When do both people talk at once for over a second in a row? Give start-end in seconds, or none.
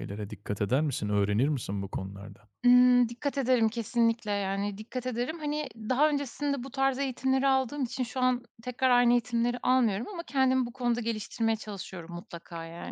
none